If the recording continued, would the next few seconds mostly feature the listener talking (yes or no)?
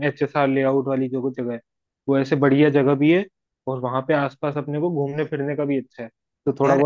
no